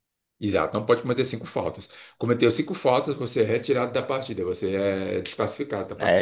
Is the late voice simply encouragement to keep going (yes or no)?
no